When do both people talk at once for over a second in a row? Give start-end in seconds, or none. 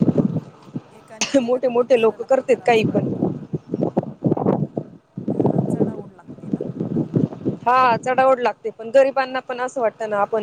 1.4-3.1